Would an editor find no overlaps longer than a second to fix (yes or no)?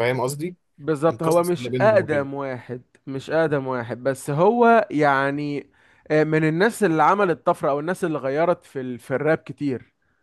no